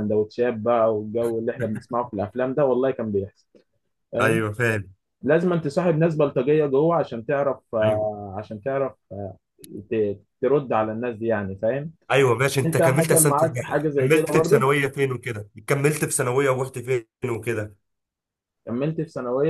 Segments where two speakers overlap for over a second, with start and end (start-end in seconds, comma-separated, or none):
12.7-14.7